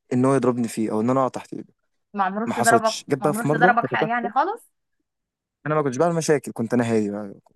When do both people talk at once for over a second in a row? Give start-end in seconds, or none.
2.5-4.3